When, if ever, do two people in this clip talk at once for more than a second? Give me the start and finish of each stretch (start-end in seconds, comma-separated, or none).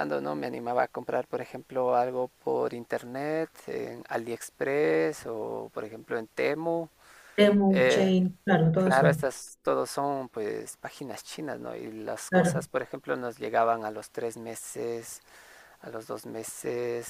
none